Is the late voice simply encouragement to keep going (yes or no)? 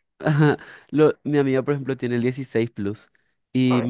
yes